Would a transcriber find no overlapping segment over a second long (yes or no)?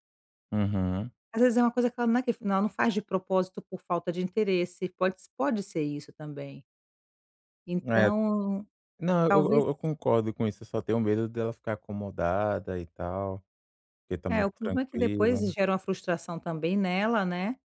no